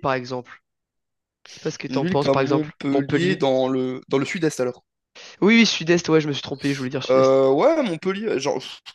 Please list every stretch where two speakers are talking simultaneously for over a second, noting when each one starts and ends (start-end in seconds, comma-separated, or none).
1.9-3.4